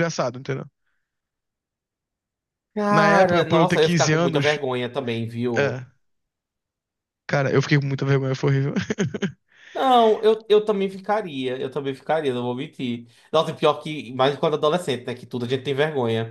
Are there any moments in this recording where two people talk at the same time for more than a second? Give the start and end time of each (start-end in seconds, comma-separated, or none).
2.9-4.6